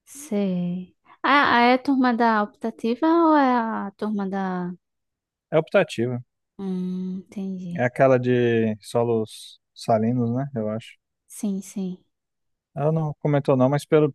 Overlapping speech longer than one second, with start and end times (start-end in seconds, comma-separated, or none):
none